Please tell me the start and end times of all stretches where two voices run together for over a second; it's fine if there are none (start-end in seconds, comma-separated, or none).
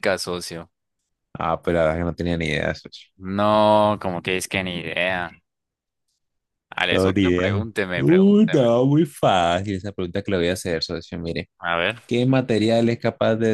6.9-8.7